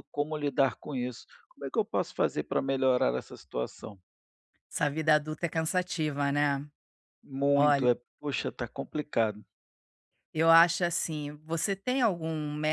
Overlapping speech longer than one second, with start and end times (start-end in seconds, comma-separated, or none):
none